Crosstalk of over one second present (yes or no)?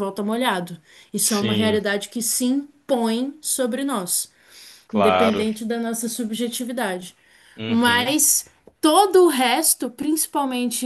no